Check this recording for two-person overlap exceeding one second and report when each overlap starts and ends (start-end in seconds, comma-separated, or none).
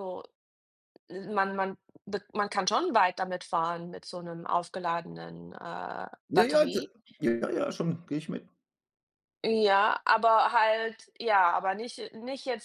none